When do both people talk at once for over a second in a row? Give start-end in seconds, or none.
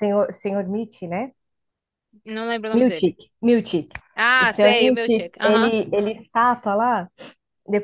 4.4-5.8